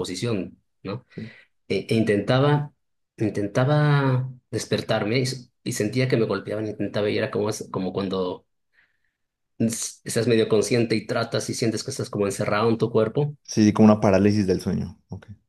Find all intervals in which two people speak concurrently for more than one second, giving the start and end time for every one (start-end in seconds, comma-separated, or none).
none